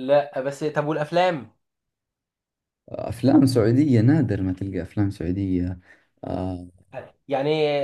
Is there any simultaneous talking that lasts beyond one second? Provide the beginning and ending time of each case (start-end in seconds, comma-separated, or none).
none